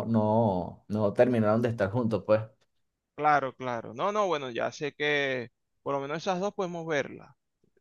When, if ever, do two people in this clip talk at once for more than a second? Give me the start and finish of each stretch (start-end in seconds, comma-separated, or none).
none